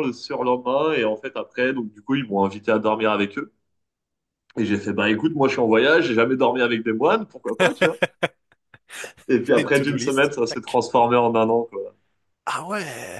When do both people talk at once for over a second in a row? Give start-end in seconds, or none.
9.5-10.8